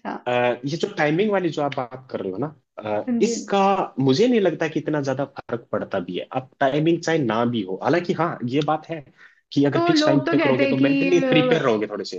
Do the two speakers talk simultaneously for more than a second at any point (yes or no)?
yes